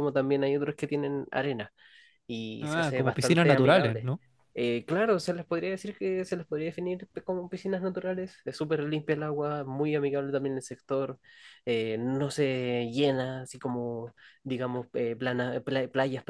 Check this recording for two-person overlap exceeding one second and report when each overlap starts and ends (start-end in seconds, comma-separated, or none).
2.6-4.1